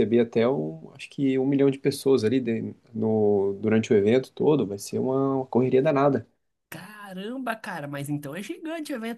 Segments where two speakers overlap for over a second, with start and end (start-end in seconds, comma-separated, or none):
none